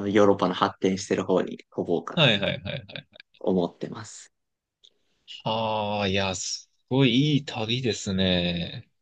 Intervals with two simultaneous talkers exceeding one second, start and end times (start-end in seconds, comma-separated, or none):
none